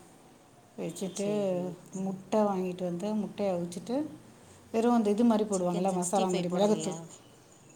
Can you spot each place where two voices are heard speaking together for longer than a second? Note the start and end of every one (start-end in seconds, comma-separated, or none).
5.5-7.0